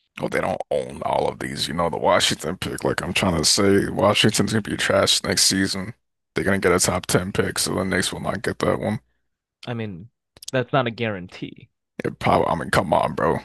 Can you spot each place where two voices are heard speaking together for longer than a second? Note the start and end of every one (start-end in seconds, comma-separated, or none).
none